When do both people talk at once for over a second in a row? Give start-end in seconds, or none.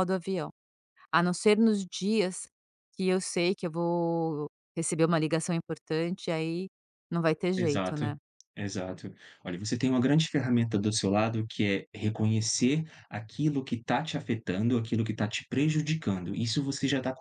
none